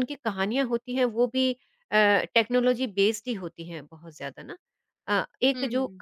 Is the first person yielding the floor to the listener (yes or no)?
no